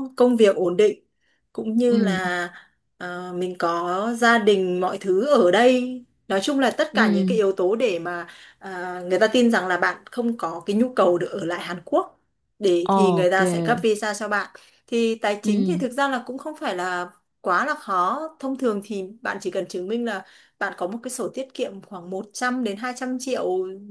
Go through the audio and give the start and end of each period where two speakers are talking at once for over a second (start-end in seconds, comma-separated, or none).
none